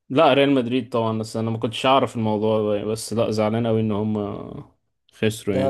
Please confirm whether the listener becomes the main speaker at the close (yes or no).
yes